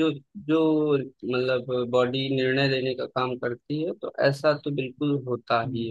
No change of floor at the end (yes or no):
yes